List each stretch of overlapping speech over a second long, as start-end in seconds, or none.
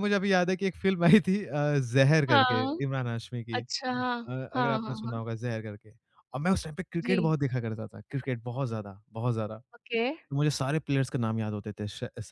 3.5-5.1